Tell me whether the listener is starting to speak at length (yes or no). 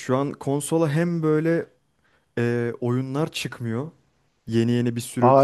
yes